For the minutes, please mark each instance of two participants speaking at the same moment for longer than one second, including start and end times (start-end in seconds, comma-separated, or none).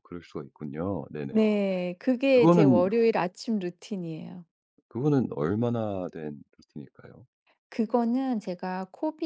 none